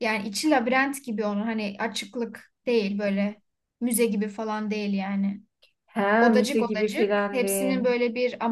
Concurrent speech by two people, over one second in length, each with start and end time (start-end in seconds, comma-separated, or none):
6.2-8.0